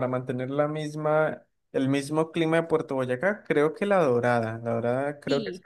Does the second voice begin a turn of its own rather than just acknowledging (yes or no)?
yes